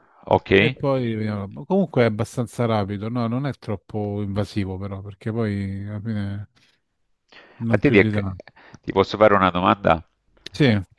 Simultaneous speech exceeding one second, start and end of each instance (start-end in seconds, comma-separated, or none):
none